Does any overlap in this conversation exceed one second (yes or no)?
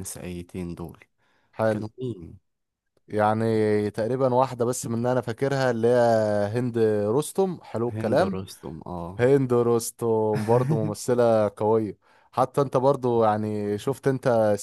no